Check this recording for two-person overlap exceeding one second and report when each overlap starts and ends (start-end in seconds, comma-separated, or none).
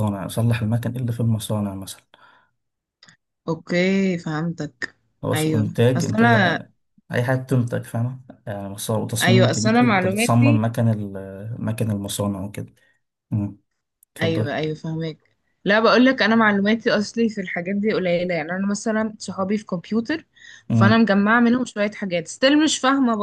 5.3-6.6, 9.2-10.6